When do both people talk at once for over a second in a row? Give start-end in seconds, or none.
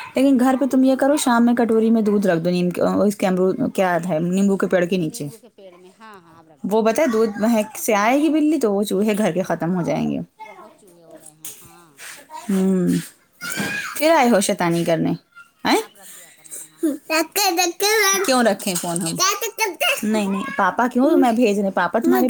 none